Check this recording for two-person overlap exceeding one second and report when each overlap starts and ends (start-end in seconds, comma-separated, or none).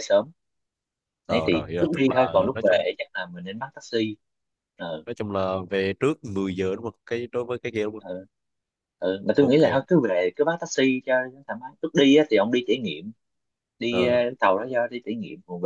1.3-2.9